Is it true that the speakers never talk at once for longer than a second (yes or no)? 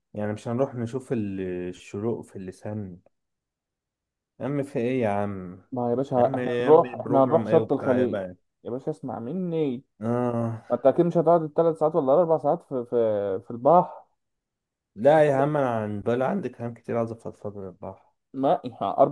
no